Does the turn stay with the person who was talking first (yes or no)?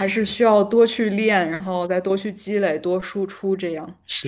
no